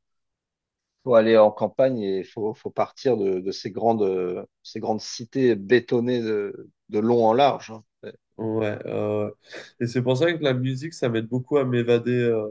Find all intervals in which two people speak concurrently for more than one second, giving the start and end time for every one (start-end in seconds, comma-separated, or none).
none